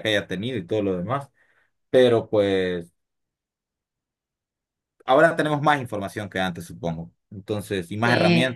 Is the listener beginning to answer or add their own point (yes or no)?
no